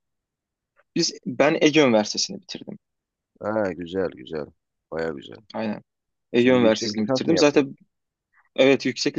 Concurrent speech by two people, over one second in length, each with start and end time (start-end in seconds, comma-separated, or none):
6.3-7.7